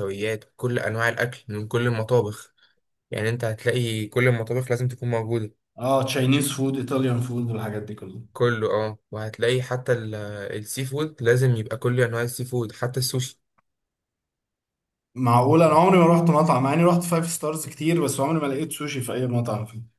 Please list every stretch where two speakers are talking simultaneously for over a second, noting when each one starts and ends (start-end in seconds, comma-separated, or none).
none